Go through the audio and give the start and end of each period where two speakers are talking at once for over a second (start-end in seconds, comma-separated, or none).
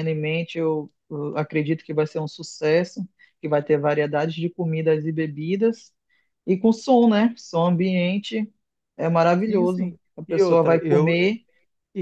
9.5-11.3